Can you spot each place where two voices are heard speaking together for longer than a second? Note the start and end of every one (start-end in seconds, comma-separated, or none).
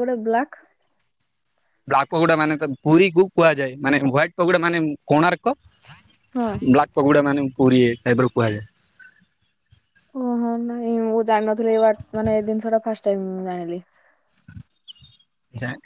none